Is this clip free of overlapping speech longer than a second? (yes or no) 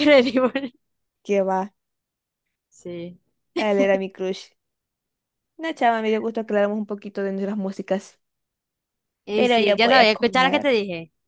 no